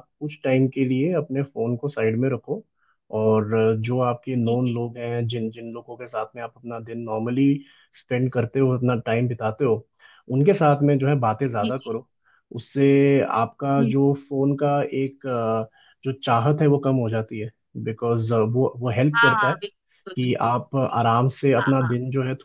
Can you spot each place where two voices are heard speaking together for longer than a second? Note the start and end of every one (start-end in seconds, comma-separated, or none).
none